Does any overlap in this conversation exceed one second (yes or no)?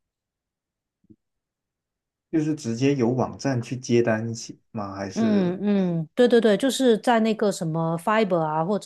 no